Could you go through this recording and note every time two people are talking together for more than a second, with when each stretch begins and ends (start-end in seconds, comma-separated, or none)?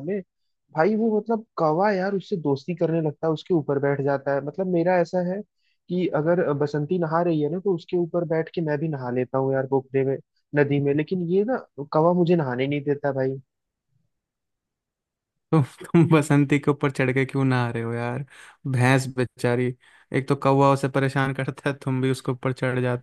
none